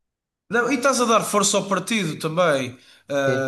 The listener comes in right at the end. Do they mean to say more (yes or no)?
no